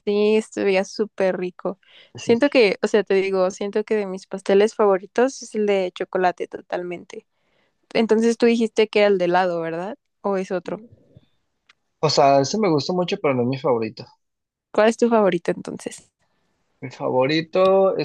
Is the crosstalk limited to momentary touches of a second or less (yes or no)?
yes